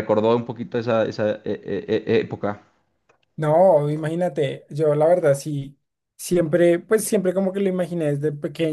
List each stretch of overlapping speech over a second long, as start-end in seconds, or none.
none